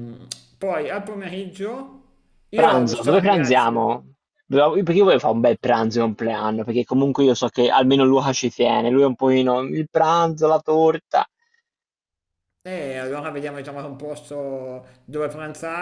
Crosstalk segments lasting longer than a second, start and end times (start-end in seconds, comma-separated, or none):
2.5-3.8